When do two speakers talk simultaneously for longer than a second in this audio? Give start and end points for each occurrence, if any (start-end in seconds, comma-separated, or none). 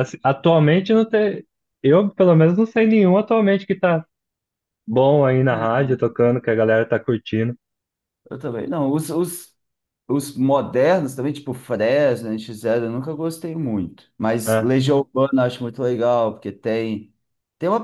none